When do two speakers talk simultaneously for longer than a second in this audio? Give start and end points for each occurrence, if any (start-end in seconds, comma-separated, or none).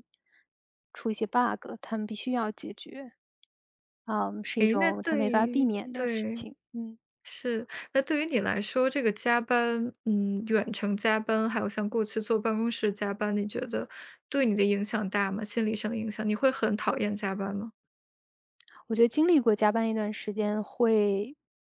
4.6-6.5